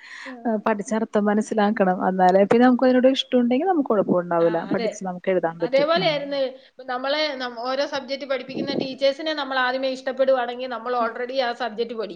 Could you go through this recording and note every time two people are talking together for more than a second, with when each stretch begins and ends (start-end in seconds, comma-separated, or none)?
none